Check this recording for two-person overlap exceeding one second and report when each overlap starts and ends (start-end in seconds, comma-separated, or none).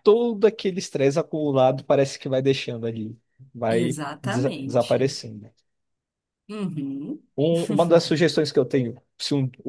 3.7-5.1